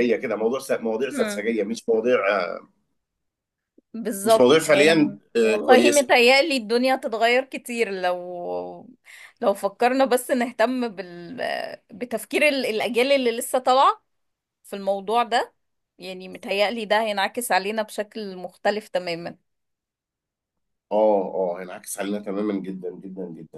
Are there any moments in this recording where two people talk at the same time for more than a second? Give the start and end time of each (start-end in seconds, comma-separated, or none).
4.2-6.1